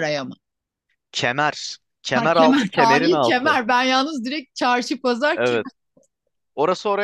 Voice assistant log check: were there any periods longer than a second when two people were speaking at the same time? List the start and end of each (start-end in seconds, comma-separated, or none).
2.1-3.6